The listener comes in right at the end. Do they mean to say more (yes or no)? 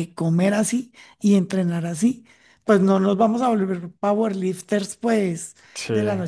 no